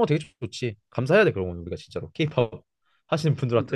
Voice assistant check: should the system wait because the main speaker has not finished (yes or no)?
no